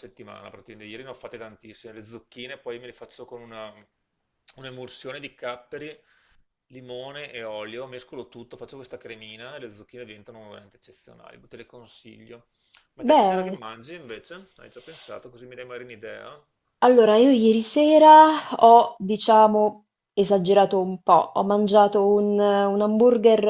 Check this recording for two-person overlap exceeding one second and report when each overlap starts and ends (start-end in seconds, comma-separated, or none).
none